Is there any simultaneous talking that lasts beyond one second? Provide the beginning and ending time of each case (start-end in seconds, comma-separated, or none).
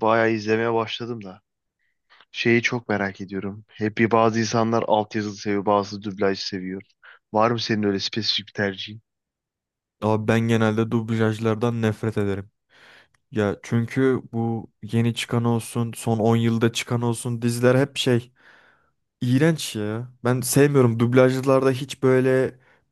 none